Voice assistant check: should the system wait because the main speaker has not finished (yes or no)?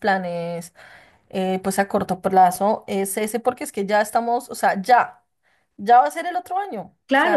no